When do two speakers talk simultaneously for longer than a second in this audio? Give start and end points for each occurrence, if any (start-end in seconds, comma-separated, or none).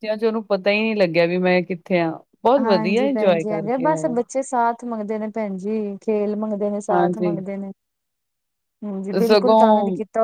2.6-4.1